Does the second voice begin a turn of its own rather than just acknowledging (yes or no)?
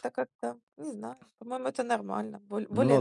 yes